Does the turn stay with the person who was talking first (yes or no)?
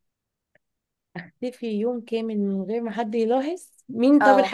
yes